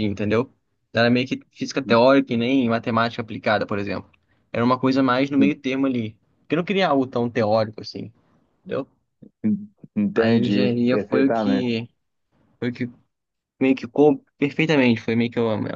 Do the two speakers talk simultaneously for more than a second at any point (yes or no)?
yes